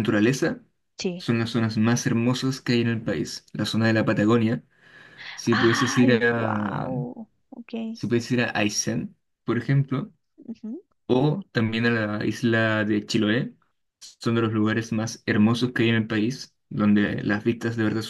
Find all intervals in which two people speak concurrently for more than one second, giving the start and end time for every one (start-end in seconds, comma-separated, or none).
5.5-6.9